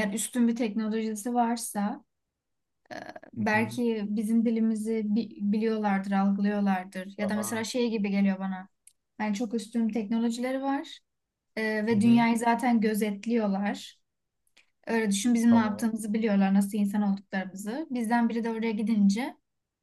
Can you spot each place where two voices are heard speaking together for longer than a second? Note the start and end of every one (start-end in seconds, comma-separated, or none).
none